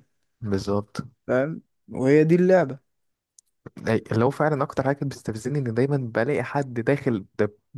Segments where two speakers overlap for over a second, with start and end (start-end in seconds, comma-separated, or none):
none